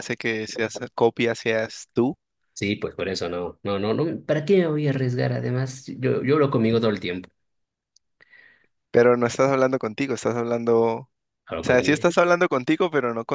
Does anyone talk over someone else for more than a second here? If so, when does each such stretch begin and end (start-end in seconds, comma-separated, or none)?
none